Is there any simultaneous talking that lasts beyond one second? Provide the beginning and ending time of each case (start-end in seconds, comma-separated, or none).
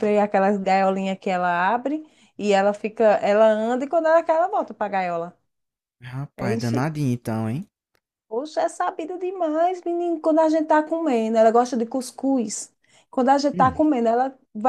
none